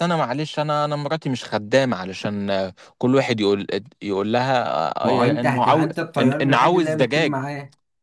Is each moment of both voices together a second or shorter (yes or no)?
no